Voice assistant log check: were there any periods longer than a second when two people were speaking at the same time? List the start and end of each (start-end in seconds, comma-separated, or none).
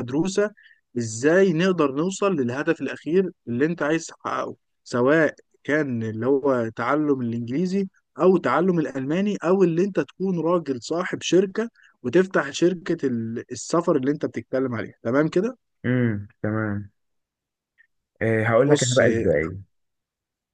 none